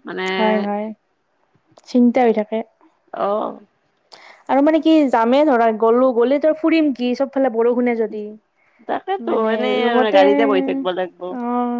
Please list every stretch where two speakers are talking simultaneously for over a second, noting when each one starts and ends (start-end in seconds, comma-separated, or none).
9.3-11.2